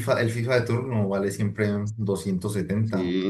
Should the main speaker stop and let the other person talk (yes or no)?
yes